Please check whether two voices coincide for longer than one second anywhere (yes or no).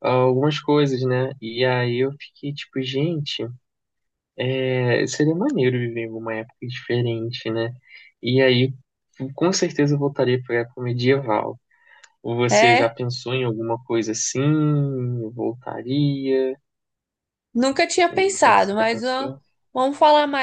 yes